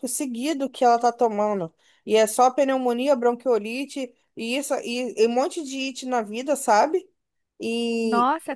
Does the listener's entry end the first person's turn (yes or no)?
no